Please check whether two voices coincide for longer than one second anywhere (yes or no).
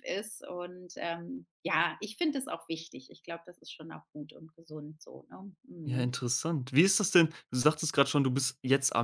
no